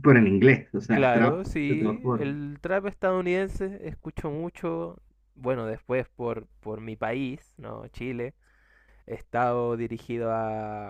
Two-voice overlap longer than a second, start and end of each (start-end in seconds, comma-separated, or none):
0.9-2.4